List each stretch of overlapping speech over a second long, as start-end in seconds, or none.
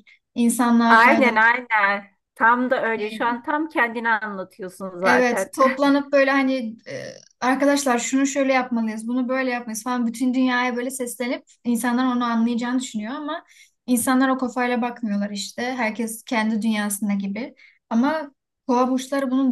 none